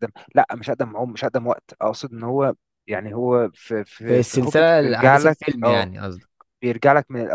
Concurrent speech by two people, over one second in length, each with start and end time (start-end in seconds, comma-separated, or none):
4.0-5.9